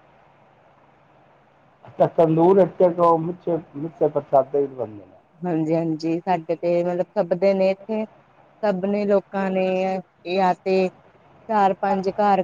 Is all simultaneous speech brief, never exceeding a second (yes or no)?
yes